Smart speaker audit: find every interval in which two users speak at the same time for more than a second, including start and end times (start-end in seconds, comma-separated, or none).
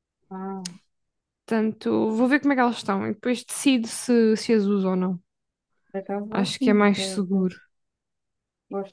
6.3-7.5